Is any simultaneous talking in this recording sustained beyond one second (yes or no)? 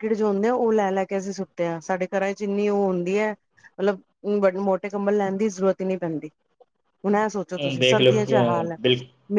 yes